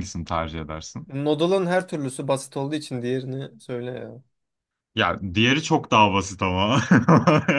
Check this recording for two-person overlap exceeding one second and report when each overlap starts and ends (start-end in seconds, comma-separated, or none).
none